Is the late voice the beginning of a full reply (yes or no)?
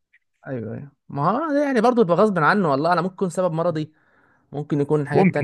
yes